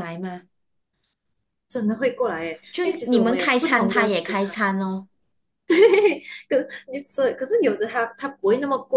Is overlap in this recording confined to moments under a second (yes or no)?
no